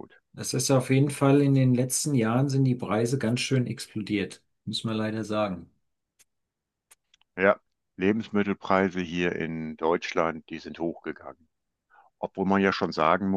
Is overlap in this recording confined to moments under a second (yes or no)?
yes